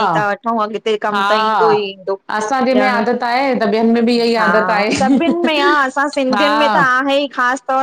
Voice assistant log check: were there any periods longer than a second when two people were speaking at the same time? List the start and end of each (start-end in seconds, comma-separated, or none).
2.9-5.6